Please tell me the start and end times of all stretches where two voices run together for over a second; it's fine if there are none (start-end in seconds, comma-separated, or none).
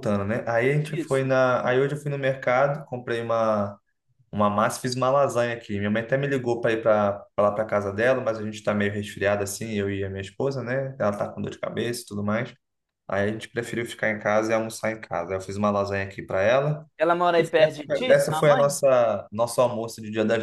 17.4-18.7